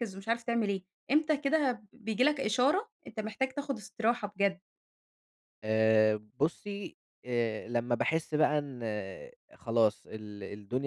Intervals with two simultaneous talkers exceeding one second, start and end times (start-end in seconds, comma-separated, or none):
none